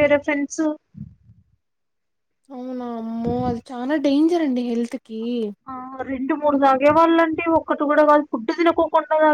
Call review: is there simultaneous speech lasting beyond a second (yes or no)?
no